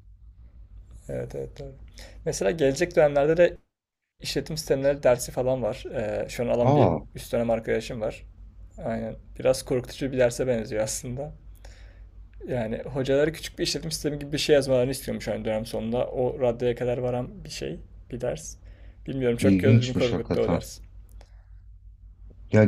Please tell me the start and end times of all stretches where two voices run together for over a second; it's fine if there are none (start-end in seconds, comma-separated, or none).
19.4-20.6